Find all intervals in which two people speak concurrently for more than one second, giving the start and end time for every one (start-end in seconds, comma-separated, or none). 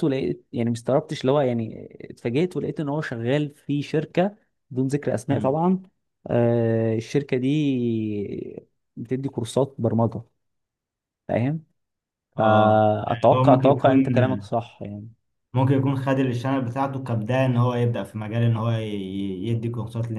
12.4-14.0